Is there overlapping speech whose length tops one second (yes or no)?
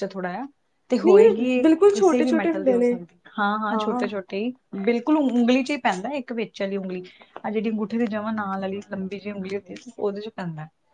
yes